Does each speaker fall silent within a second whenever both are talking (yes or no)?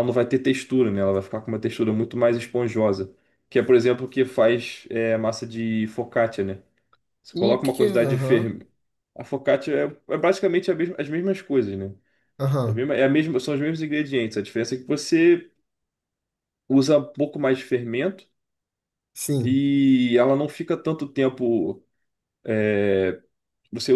no